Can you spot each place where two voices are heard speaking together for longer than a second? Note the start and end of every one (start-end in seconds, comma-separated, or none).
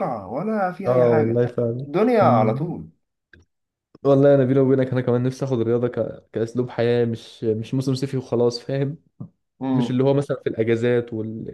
none